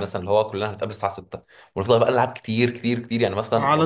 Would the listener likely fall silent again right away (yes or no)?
no